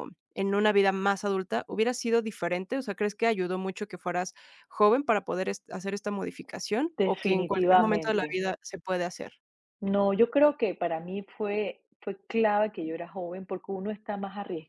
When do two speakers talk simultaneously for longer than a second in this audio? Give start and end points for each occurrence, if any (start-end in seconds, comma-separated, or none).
7.0-8.4